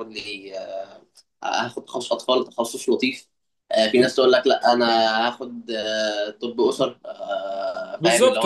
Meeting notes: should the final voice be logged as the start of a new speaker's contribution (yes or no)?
yes